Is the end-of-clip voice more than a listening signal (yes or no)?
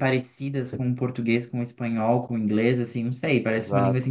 no